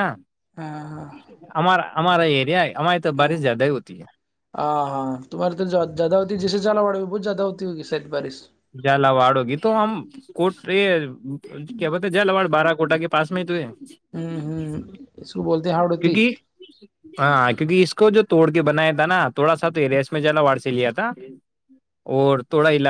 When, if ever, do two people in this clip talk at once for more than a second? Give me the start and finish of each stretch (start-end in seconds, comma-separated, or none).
none